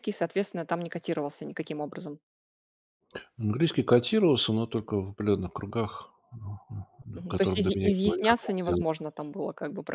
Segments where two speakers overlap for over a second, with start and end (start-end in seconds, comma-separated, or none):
7.3-8.8